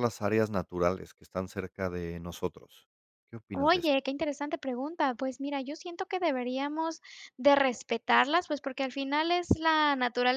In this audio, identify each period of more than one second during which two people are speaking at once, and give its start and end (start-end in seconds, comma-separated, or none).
none